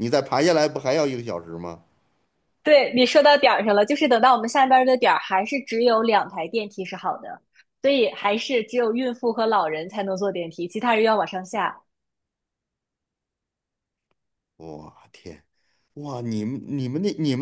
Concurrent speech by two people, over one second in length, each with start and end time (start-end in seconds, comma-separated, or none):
none